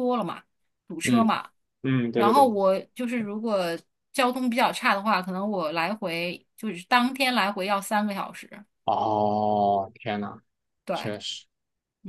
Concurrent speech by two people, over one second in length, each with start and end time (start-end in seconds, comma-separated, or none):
none